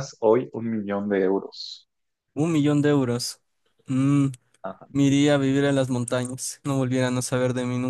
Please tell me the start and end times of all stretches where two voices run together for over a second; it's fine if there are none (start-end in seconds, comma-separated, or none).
none